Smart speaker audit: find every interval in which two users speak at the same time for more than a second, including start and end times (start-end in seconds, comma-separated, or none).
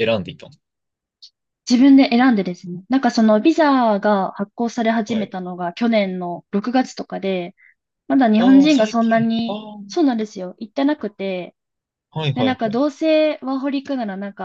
8.4-9.6